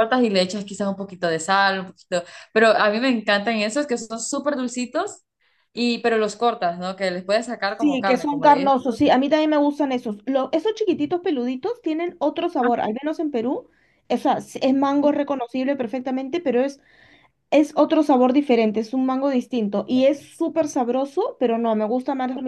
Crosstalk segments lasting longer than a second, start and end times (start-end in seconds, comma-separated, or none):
7.8-9.2